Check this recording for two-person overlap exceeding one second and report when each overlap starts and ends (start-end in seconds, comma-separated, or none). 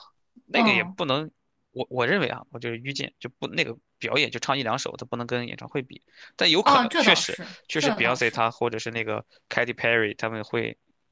6.6-8.4